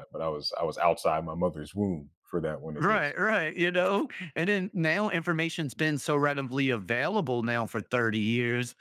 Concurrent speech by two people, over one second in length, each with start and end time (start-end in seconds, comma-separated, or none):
none